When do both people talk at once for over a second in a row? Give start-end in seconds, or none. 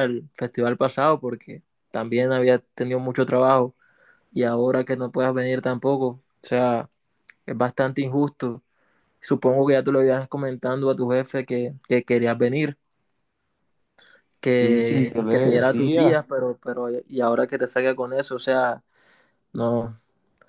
14.6-16.1